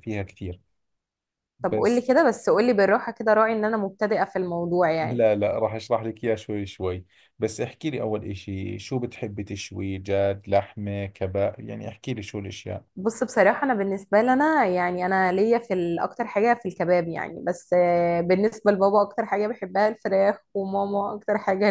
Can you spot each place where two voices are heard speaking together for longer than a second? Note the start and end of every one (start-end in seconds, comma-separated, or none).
none